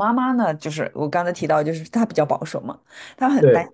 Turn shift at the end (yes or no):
no